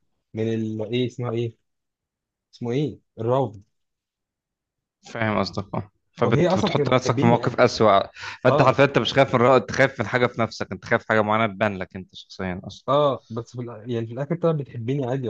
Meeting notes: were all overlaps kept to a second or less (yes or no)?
no